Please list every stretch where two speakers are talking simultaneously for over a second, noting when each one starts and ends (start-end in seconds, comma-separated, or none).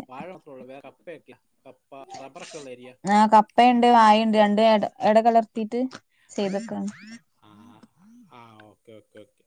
none